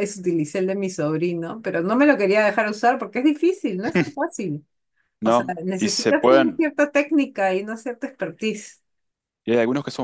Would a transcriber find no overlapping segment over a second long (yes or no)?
no